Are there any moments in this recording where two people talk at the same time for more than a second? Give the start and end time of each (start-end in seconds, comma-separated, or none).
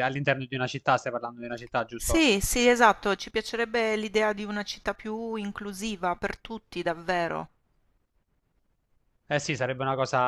none